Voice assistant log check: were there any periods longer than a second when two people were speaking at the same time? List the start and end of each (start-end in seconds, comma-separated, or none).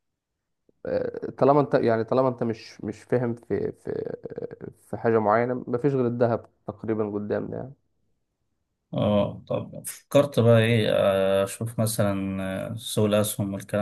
none